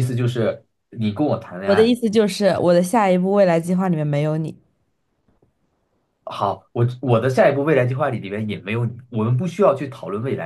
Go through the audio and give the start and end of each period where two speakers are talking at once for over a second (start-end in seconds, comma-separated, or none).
none